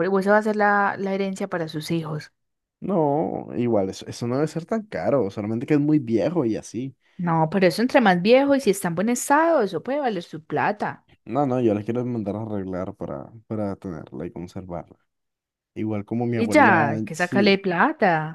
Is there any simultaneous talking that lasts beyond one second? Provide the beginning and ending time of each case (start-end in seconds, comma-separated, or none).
16.4-17.6